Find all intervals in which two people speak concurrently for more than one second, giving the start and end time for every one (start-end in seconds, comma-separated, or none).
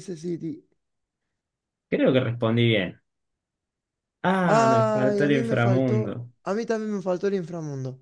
4.5-6.3